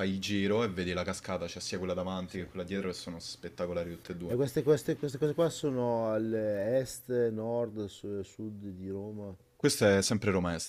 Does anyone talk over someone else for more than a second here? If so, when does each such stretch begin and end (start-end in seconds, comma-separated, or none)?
none